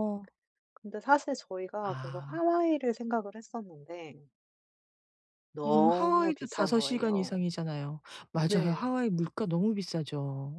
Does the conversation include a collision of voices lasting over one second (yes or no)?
yes